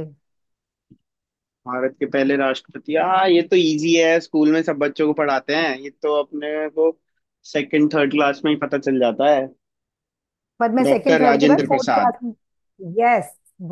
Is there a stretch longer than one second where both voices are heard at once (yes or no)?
yes